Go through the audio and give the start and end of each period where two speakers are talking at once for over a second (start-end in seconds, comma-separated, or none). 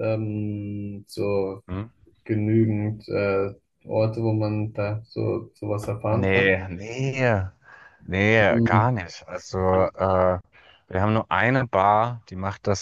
none